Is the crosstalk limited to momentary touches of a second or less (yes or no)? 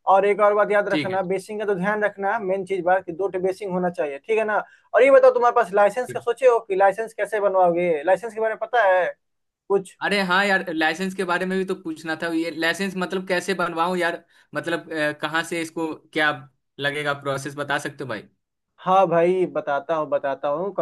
yes